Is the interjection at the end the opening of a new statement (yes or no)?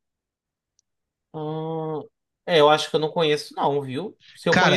yes